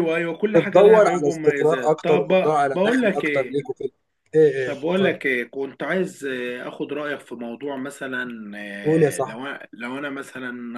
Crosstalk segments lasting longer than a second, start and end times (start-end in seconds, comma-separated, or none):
0.5-3.6